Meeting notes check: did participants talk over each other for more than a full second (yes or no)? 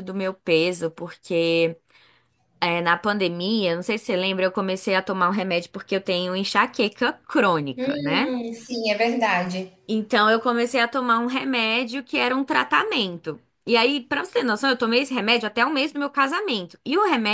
no